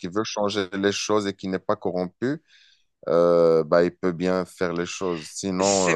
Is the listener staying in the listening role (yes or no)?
yes